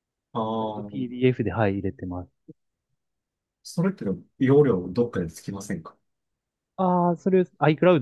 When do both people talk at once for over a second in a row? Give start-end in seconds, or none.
none